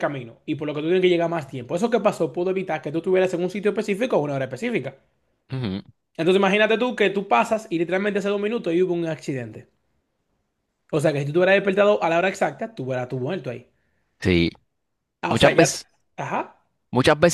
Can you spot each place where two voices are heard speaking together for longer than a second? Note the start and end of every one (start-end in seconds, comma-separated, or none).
none